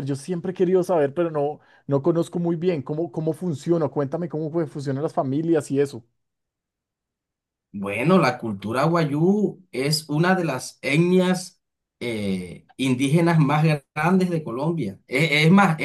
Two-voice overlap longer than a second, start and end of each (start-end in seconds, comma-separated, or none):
none